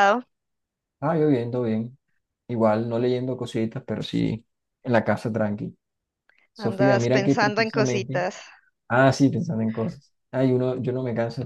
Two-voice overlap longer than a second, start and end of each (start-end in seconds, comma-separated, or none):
6.7-8.2